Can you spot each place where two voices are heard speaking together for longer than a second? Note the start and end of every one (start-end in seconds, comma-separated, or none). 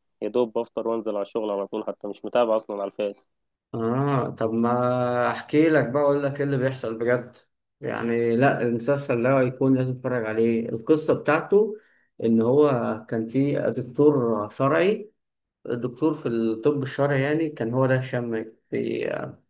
none